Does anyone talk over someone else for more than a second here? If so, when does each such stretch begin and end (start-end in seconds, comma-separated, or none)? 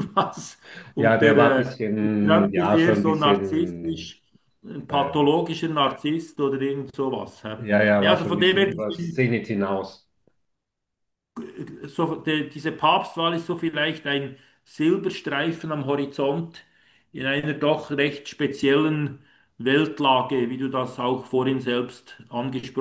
1.0-4.1, 8.0-9.3